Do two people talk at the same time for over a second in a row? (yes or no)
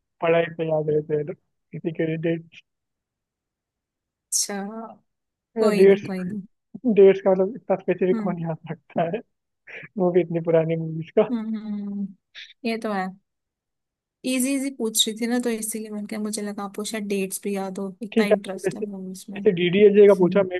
yes